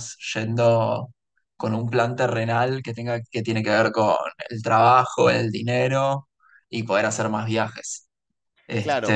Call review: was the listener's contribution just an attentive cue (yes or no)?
no